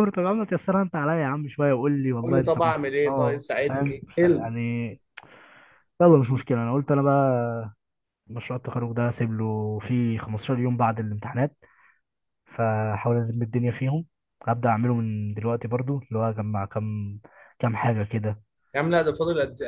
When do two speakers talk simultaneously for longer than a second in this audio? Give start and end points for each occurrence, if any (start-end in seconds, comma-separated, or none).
2.2-4.3